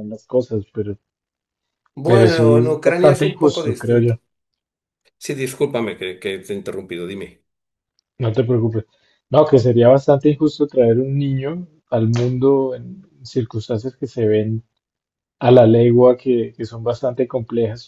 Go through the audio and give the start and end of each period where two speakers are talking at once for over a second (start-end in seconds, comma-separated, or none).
2.0-4.1